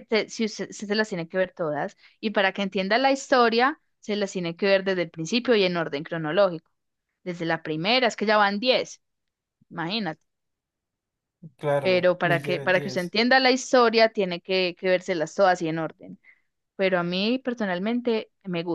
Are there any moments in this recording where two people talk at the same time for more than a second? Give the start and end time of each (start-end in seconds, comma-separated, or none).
11.8-13.2